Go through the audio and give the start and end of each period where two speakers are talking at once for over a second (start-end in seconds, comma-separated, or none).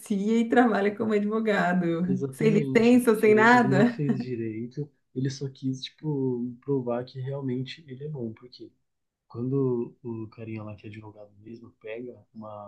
2.0-4.0